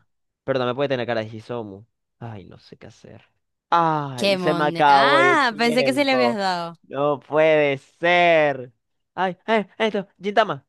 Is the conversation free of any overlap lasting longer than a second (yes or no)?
no